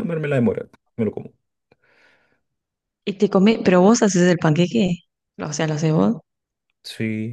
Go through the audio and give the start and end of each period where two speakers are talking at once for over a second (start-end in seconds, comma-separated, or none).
none